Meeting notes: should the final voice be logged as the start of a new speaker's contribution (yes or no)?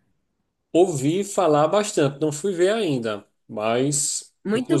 yes